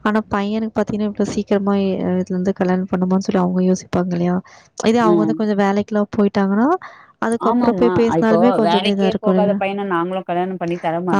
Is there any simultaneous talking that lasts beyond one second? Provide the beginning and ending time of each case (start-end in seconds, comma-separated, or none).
7.5-9.6